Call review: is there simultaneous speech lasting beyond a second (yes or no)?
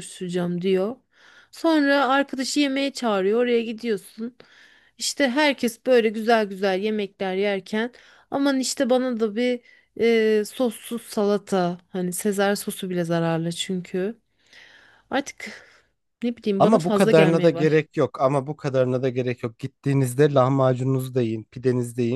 yes